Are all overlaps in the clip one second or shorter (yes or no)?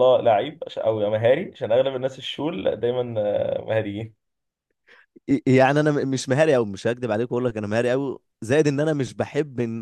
yes